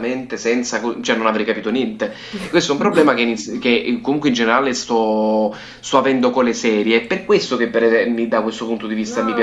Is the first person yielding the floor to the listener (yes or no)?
yes